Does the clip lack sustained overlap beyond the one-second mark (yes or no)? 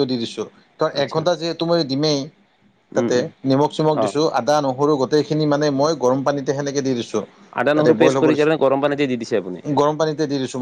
no